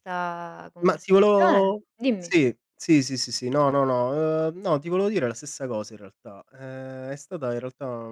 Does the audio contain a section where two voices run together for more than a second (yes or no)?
yes